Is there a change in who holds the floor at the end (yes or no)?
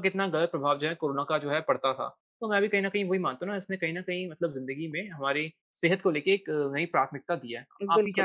yes